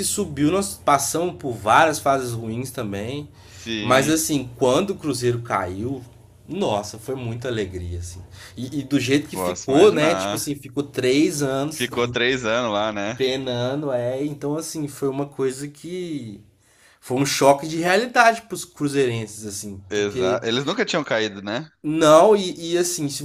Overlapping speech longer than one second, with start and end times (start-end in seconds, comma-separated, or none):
9.3-10.5